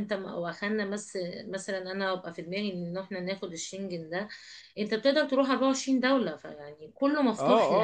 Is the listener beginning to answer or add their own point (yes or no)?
yes